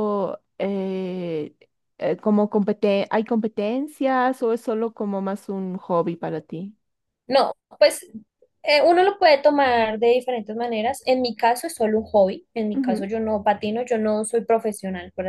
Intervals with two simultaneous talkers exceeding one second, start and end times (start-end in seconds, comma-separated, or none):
none